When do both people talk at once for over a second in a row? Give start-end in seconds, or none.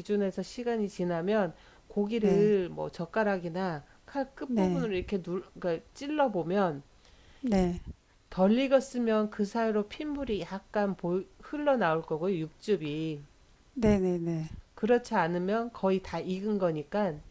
none